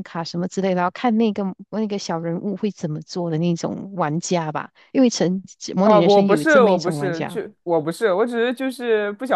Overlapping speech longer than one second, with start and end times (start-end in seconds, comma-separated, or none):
5.8-7.4